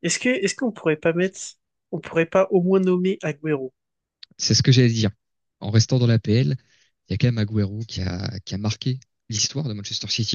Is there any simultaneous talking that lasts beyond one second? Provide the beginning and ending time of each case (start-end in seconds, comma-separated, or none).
none